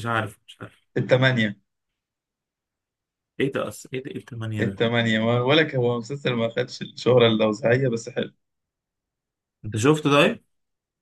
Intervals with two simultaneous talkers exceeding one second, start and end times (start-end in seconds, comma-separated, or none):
none